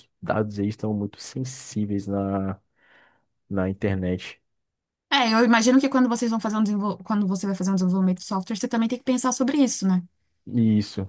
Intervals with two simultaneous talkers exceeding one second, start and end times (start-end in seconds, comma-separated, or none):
none